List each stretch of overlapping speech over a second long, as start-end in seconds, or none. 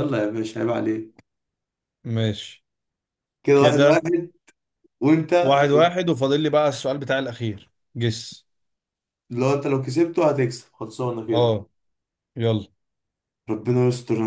none